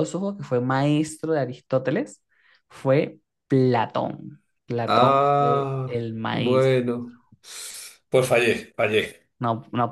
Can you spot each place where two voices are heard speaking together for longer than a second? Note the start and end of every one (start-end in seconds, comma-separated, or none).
4.8-6.8